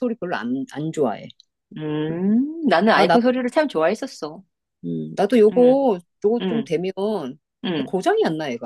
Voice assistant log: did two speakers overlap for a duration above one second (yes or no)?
no